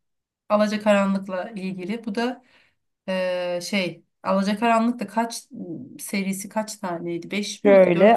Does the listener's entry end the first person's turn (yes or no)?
yes